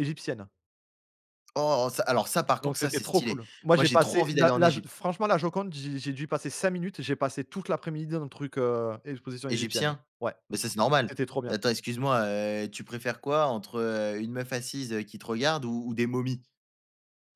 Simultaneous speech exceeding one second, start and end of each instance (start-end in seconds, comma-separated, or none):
2.6-4.9